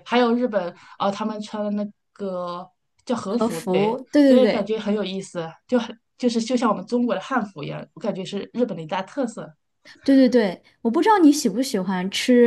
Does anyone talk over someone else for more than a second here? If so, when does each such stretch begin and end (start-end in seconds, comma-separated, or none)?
3.3-4.7